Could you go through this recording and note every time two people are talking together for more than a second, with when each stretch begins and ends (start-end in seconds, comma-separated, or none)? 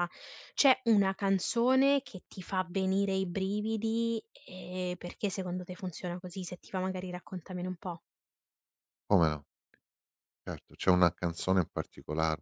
none